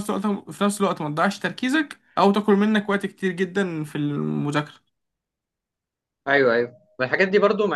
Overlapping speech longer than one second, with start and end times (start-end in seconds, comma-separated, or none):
none